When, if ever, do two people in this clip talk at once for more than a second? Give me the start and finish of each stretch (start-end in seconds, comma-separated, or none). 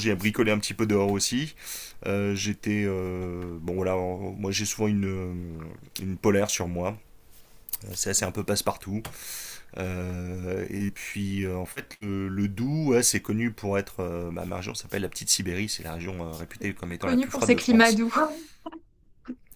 16.6-18.0